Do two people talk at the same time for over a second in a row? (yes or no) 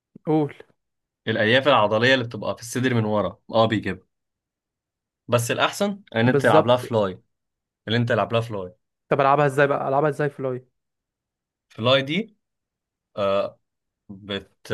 no